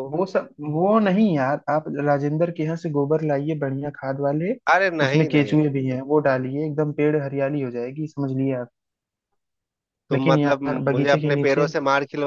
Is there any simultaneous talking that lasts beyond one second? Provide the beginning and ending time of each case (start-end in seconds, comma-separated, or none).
10.1-11.7